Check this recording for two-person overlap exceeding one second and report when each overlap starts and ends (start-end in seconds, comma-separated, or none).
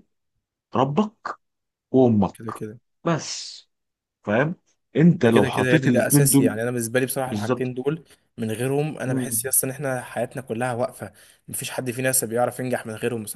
5.2-6.5